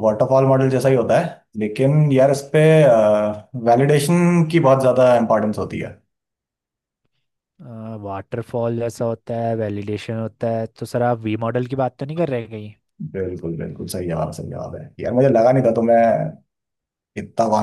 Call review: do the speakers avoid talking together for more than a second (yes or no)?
yes